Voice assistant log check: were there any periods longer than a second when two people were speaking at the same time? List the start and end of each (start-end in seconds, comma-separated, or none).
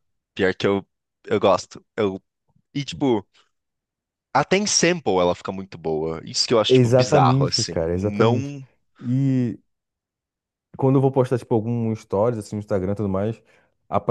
6.7-8.5